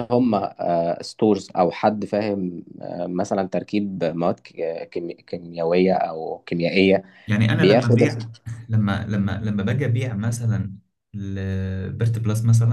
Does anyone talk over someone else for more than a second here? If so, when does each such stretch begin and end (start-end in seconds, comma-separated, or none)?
none